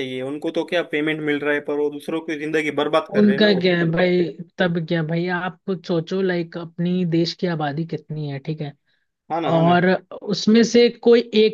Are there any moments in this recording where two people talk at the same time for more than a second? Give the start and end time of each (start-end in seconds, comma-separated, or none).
none